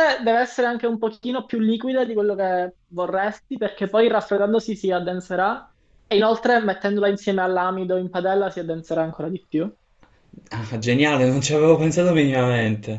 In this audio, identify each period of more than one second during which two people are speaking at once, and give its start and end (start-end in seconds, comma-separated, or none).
none